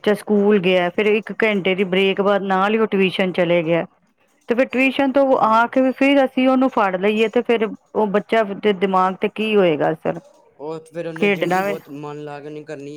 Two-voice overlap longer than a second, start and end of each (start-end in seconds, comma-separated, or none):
none